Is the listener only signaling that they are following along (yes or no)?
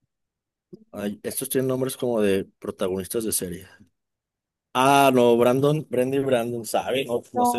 no